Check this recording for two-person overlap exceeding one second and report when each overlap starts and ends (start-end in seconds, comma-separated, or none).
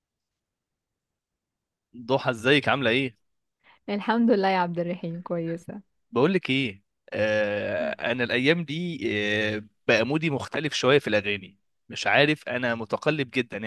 none